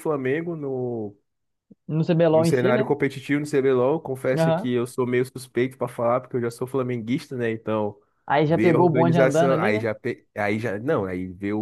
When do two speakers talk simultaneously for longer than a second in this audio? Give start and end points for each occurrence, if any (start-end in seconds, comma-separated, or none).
8.5-9.9